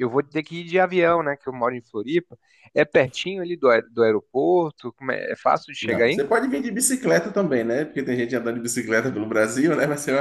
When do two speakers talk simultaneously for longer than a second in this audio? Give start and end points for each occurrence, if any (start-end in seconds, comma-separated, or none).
none